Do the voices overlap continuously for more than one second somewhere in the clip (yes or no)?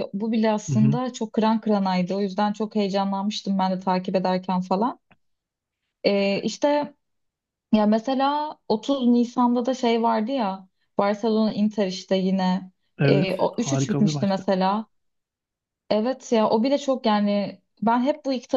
yes